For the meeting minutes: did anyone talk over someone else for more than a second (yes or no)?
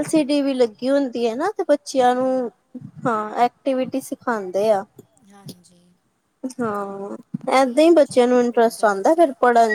yes